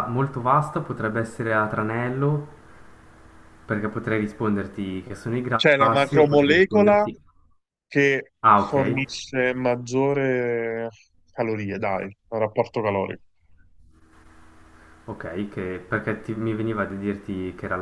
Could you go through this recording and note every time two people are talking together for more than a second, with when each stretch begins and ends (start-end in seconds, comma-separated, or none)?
5.5-7.1